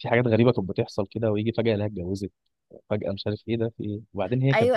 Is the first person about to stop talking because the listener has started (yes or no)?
yes